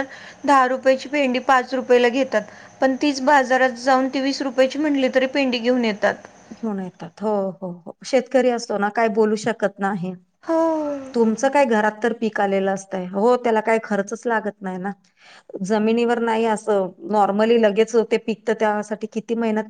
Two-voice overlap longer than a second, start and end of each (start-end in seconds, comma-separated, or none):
none